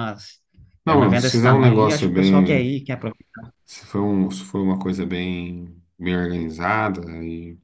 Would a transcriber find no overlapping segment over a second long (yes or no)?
no